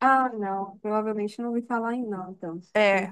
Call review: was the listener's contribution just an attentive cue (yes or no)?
no